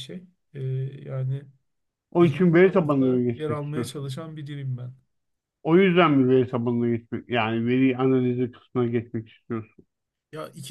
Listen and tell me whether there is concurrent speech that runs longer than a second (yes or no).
yes